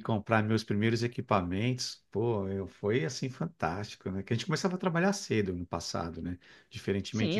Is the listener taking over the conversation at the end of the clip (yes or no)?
yes